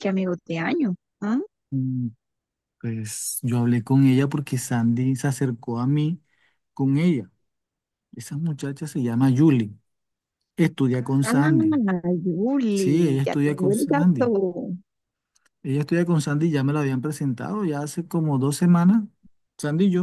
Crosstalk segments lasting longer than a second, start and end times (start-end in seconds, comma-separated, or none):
12.7-14.3